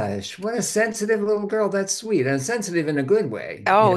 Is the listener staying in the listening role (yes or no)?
no